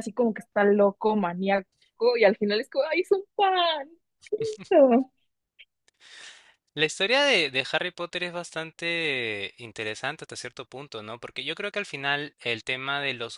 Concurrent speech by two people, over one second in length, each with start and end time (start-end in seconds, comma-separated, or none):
none